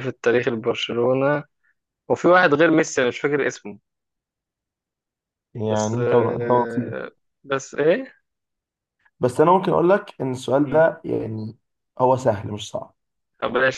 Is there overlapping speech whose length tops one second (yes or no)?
yes